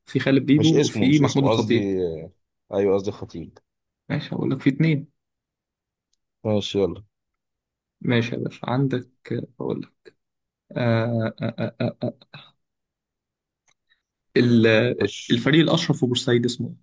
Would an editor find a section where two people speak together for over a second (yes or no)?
yes